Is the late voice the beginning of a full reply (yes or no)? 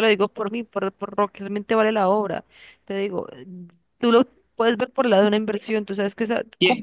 yes